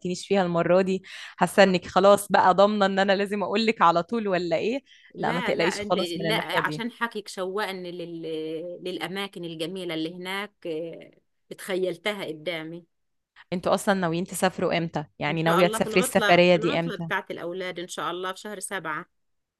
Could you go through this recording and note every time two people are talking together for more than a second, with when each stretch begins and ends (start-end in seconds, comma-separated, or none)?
5.2-6.8, 15.3-17.1